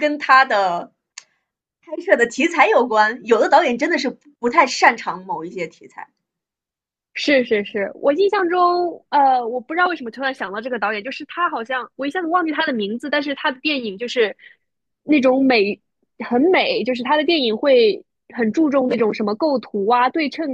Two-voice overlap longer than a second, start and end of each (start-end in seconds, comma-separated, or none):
none